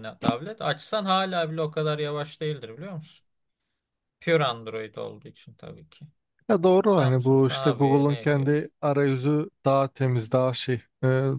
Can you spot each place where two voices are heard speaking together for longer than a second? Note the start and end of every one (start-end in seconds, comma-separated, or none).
6.8-8.5